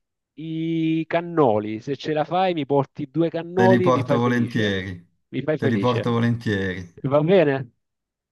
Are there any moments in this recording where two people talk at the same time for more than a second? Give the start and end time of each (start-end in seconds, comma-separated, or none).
3.5-4.8